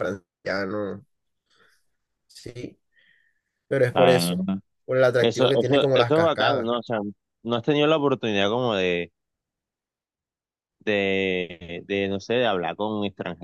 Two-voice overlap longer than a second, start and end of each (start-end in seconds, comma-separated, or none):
5.2-6.7